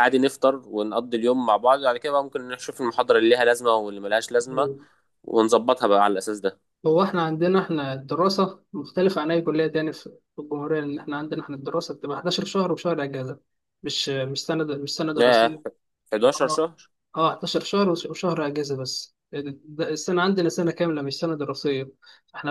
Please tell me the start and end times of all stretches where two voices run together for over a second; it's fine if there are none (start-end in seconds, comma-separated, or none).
none